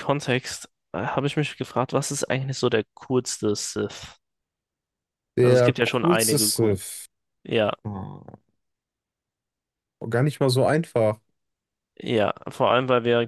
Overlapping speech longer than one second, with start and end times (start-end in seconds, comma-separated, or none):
5.4-6.8